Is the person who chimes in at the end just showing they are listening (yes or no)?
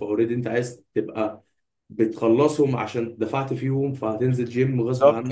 no